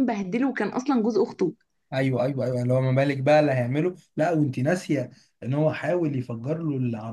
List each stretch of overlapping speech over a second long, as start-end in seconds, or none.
none